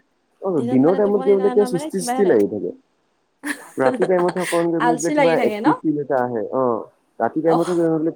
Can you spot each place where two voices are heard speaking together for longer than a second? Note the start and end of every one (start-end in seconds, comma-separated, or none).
0.6-2.4